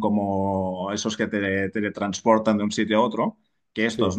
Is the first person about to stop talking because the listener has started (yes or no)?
no